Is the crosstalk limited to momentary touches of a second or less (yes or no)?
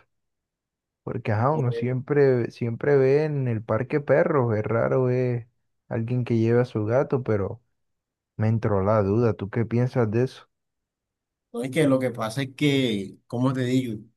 yes